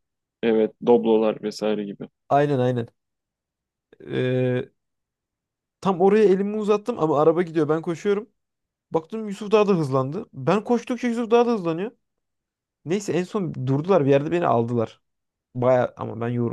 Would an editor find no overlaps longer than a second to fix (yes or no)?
yes